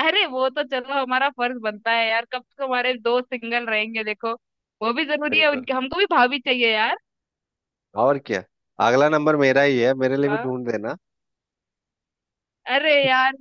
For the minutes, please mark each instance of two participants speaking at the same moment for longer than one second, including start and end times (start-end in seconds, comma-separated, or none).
none